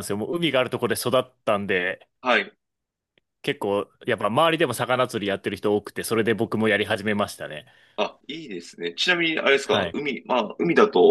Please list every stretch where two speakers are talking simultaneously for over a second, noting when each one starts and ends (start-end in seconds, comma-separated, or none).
none